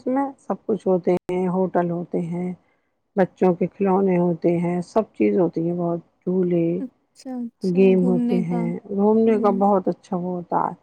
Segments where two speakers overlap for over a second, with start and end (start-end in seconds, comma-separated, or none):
7.8-9.6